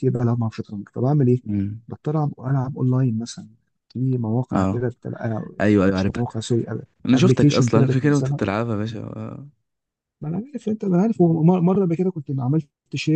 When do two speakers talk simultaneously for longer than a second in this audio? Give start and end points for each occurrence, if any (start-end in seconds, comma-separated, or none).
7.1-8.4